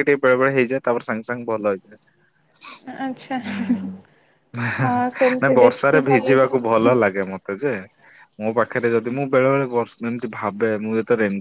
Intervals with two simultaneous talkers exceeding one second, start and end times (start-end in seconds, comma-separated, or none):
5.4-6.9